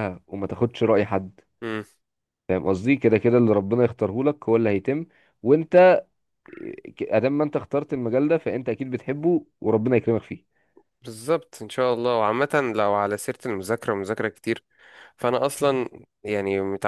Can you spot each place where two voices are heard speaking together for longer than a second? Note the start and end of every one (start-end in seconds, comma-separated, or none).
none